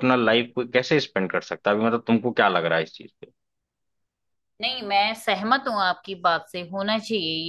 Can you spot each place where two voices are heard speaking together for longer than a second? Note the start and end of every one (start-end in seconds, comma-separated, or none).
none